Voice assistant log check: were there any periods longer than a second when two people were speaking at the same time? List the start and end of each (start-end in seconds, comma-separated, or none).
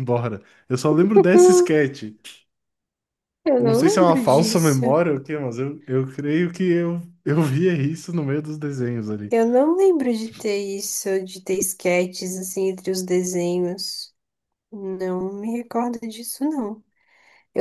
3.6-4.8